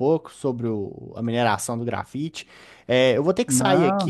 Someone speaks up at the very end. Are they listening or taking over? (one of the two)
listening